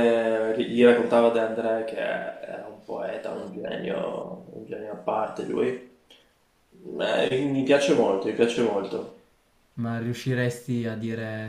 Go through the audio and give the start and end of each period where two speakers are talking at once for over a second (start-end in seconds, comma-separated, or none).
none